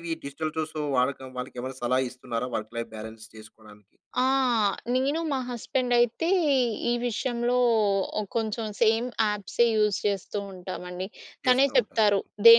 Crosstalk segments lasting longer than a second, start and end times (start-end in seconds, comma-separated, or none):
none